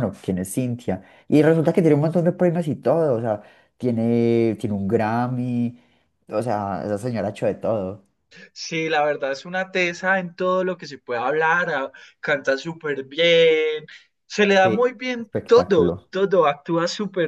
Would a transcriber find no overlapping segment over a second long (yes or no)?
no